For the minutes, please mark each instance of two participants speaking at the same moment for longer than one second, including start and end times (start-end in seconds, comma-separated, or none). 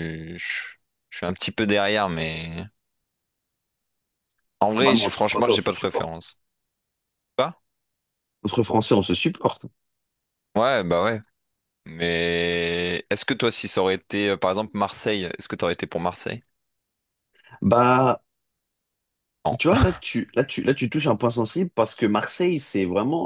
4.8-6.1